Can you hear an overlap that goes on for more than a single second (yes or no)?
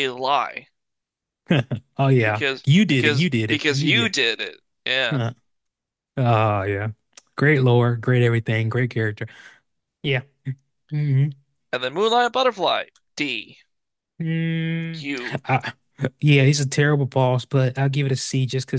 yes